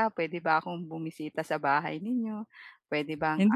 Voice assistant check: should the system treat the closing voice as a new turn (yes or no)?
yes